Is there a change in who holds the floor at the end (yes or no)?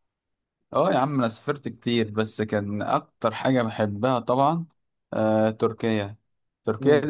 no